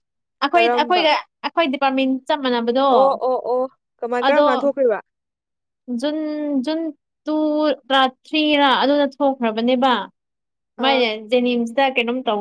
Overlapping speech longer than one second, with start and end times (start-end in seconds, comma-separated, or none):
none